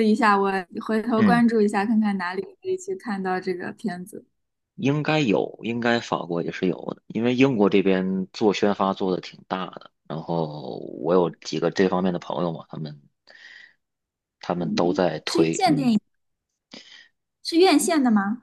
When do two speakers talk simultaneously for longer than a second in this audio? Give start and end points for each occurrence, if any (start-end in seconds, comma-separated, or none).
14.6-15.9